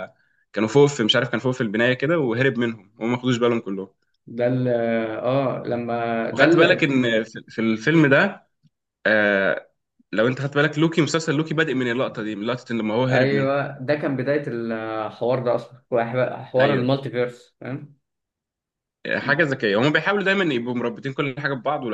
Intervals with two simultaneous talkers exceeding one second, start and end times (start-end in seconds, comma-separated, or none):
none